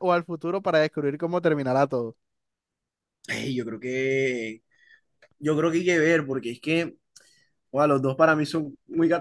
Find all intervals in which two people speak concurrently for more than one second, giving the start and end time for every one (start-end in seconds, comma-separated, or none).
none